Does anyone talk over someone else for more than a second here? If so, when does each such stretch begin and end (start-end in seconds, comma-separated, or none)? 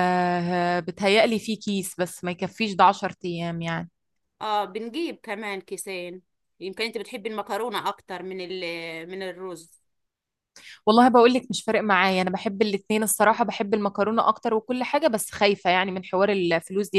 none